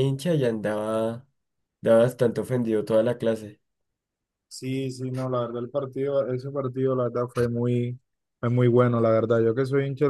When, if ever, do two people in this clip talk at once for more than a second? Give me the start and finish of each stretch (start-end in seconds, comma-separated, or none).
none